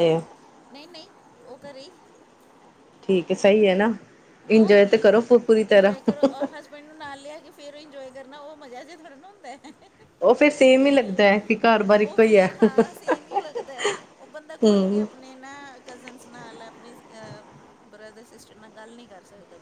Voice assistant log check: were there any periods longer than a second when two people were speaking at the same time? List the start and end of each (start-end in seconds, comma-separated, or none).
none